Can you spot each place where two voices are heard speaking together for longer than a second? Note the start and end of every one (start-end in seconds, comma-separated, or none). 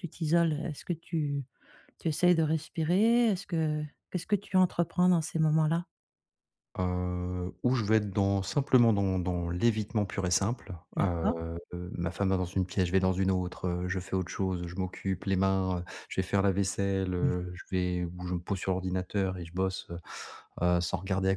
none